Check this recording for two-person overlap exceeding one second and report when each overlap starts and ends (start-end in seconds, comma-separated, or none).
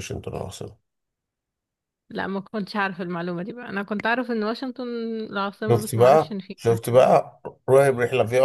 5.7-7.0